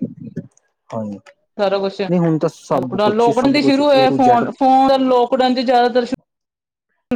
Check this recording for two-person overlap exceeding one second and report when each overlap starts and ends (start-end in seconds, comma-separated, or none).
2.8-4.4